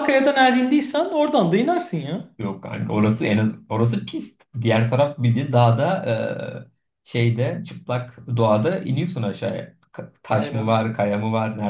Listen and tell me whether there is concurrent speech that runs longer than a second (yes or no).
no